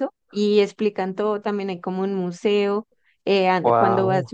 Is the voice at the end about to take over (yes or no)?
no